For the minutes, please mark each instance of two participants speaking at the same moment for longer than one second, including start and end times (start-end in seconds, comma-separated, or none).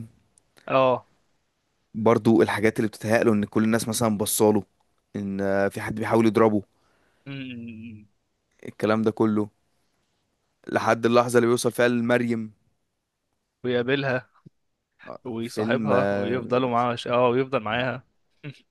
15.2-16.4